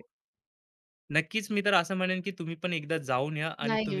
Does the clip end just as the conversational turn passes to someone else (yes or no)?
yes